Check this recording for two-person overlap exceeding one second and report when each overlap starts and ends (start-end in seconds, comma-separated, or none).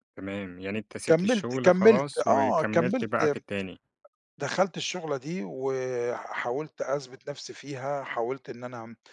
1.1-3.2